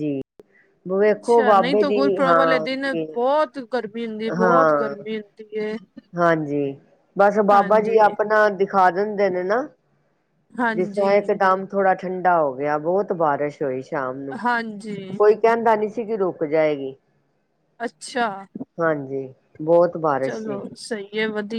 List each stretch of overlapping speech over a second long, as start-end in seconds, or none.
1.1-3.1